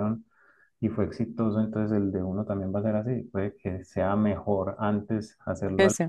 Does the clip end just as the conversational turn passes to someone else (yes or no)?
no